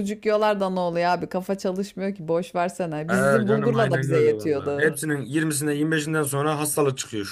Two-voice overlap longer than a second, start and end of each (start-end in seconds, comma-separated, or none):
3.1-5.0